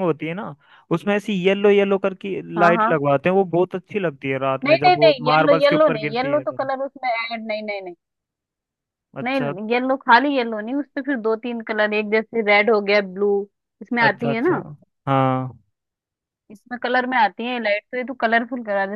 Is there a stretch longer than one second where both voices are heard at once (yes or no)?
yes